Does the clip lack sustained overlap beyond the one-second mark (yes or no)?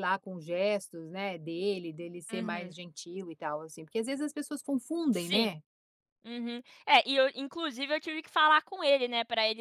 yes